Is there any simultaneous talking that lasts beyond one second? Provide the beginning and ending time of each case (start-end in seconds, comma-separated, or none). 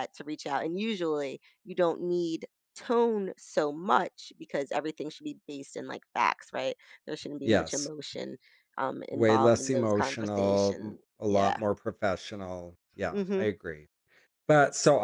9.1-11.6